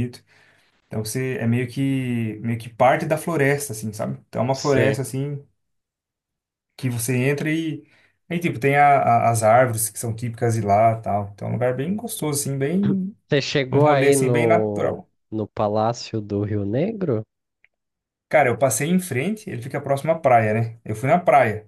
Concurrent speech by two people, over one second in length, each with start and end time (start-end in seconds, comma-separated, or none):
13.7-14.9